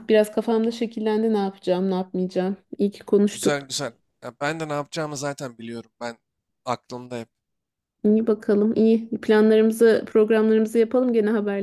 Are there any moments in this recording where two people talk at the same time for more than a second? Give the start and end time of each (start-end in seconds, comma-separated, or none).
none